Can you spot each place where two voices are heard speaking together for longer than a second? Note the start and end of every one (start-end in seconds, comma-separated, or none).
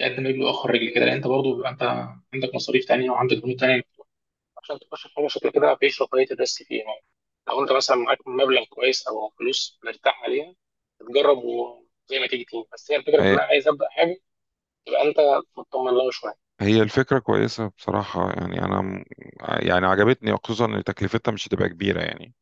none